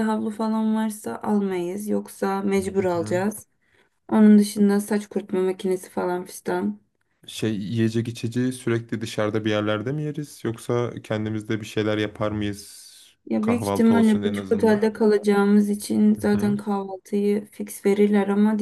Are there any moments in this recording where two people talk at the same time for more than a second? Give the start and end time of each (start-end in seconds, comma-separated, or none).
13.4-14.9